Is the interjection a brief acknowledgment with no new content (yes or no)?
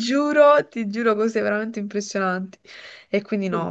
yes